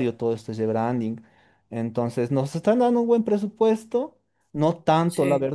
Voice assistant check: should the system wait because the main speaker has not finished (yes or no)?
yes